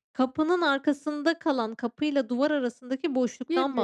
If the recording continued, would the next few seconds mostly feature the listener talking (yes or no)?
yes